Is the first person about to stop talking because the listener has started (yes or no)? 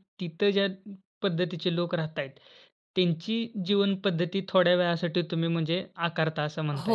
yes